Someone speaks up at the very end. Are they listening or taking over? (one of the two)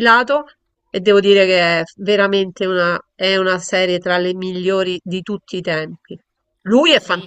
taking over